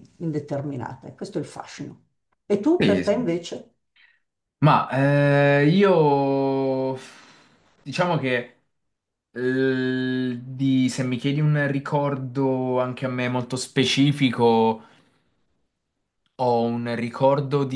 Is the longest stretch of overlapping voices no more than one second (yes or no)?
yes